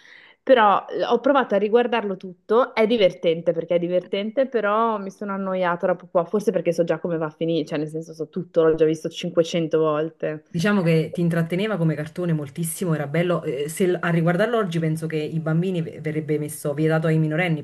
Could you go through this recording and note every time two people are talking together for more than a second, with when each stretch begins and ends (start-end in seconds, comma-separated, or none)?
none